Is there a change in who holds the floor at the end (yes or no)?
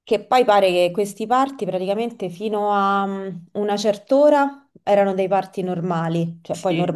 no